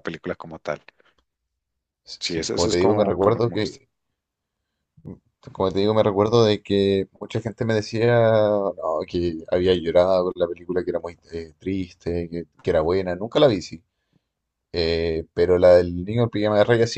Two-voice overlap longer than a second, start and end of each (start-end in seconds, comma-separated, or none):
2.2-3.8